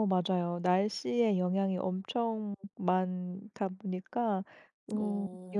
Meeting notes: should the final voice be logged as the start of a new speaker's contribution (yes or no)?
no